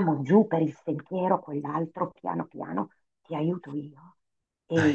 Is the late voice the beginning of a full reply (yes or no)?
no